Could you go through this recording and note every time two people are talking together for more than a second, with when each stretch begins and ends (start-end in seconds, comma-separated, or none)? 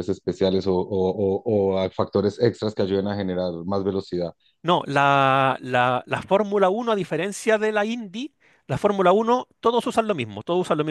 none